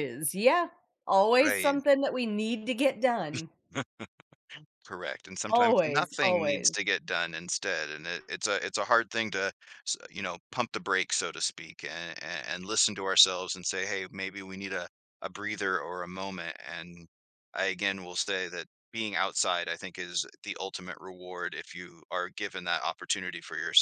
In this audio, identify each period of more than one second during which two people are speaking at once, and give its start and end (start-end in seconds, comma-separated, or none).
5.5-6.7